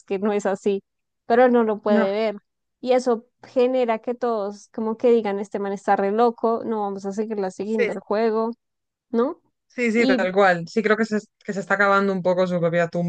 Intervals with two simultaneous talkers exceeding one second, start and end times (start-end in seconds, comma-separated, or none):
none